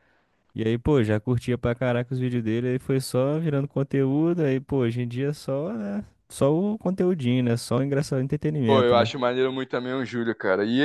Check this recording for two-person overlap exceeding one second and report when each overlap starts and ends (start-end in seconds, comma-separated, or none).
none